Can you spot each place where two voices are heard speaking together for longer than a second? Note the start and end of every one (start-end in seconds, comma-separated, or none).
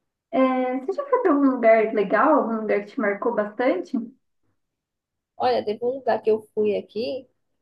none